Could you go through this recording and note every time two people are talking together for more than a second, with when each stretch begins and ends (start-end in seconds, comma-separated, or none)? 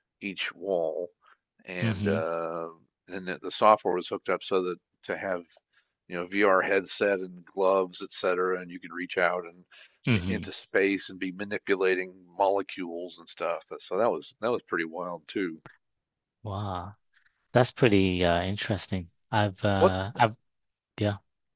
none